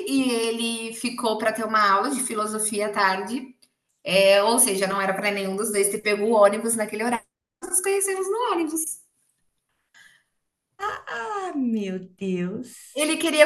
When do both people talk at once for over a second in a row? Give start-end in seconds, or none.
none